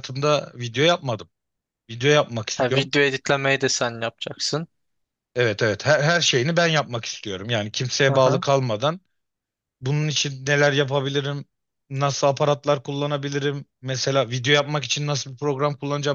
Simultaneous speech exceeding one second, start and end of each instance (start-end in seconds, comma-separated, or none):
none